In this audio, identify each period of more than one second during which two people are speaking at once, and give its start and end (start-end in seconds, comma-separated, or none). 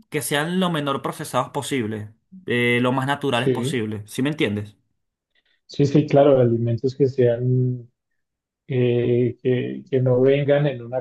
none